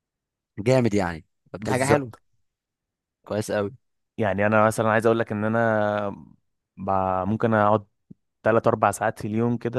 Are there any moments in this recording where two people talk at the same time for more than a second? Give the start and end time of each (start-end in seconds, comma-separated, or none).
none